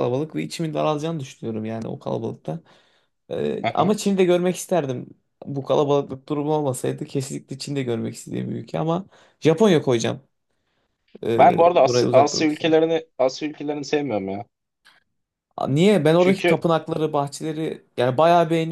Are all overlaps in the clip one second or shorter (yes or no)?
no